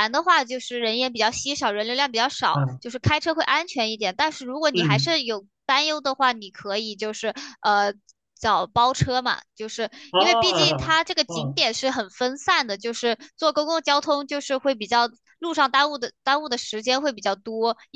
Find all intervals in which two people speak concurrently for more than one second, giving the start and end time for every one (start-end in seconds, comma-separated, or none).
10.1-11.6